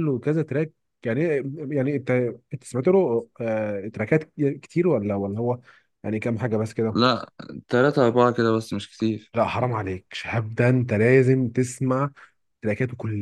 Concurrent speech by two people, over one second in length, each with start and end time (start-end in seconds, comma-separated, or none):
none